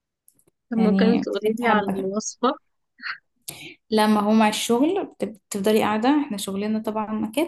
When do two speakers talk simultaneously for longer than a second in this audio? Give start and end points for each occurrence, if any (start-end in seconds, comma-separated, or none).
0.8-2.1